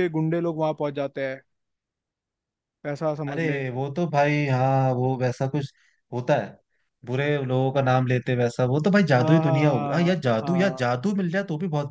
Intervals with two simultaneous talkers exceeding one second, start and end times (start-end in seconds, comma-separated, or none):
9.2-10.9